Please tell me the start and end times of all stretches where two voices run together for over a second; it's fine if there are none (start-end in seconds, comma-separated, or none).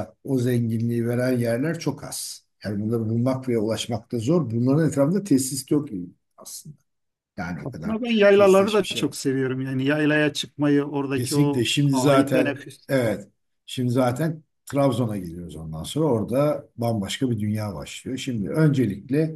7.6-9.1, 11.1-12.9